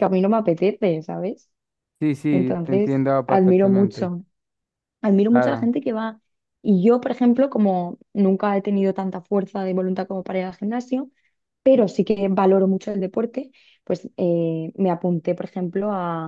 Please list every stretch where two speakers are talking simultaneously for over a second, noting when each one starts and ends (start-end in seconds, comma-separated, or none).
2.3-4.1